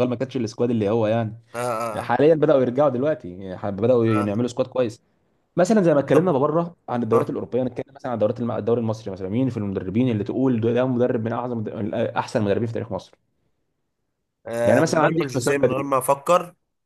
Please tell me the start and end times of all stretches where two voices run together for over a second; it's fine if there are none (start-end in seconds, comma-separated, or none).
14.7-15.8